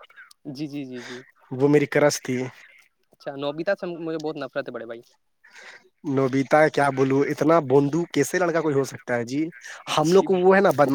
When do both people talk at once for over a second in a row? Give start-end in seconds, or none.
none